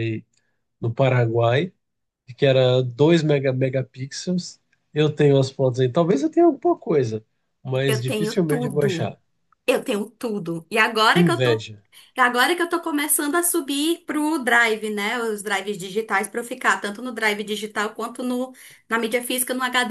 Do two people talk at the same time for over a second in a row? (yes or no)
yes